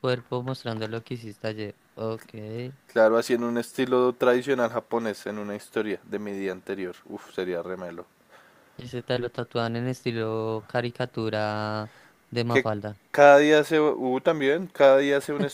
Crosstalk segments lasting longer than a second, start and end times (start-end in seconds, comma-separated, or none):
none